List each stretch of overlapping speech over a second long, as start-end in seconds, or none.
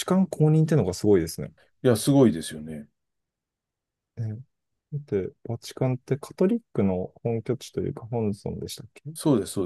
none